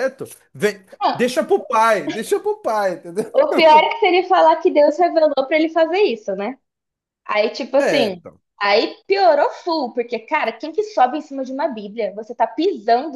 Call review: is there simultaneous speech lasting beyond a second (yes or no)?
no